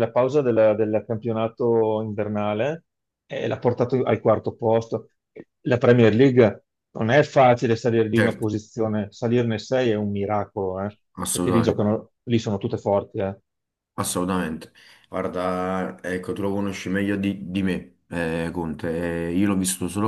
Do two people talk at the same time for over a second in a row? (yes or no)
no